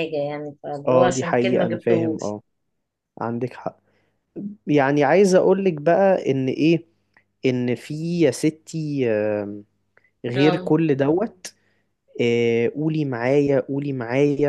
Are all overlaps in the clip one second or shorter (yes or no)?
no